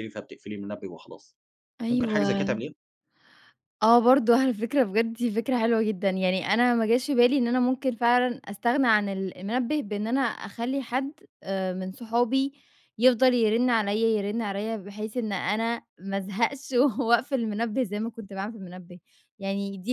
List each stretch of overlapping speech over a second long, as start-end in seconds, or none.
none